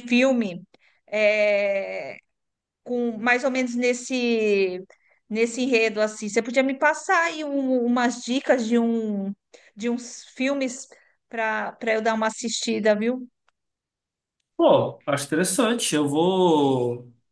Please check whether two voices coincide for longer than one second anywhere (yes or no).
no